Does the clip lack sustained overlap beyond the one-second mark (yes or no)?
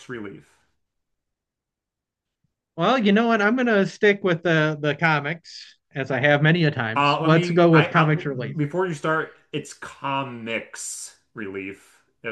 no